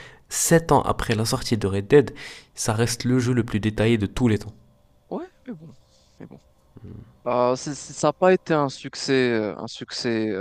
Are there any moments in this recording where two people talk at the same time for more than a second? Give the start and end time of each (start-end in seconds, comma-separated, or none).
none